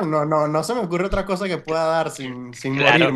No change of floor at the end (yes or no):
no